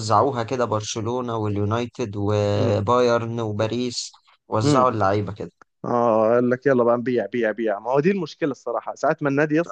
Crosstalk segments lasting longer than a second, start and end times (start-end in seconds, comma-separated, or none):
none